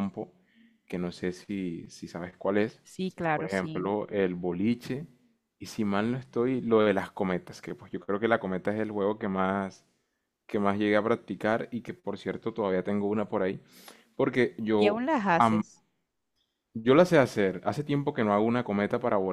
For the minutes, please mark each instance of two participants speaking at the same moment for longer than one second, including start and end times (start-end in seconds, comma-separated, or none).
none